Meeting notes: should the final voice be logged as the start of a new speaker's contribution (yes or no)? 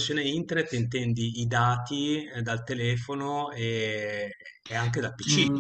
yes